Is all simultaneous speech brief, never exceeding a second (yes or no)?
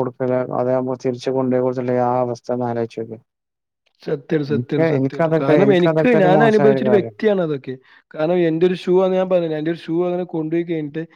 no